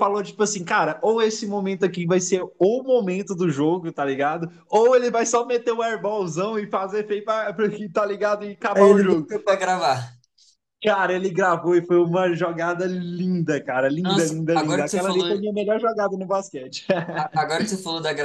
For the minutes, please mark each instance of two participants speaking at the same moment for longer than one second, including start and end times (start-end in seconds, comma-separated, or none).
14.0-15.2